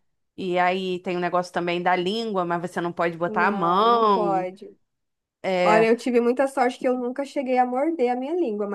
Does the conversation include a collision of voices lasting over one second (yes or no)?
yes